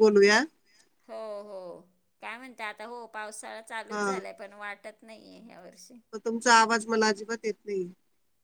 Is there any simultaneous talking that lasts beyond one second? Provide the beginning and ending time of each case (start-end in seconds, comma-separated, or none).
none